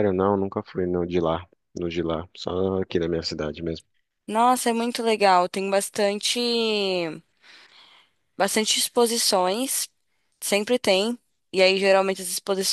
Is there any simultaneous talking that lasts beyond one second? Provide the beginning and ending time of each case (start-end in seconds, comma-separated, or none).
none